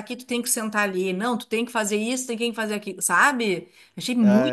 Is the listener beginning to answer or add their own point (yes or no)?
yes